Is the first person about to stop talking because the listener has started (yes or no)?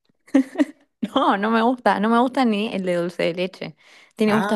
yes